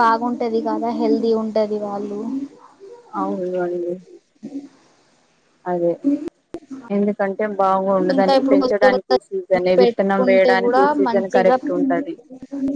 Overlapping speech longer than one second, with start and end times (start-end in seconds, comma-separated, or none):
8.2-11.6